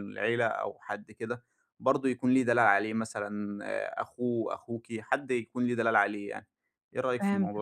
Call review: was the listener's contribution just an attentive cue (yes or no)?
no